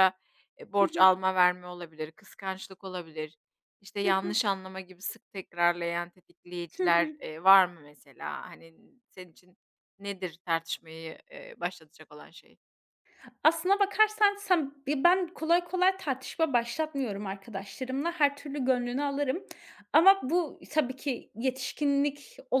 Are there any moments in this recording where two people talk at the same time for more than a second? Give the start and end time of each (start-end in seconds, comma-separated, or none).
none